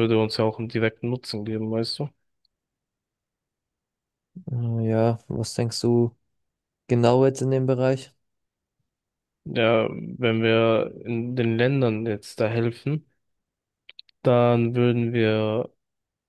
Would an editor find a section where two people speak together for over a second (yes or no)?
no